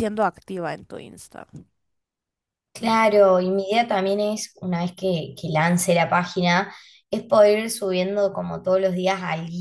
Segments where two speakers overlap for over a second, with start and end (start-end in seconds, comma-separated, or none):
none